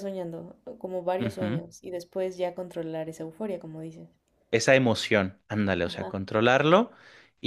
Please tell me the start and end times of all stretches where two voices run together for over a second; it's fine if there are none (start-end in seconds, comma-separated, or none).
none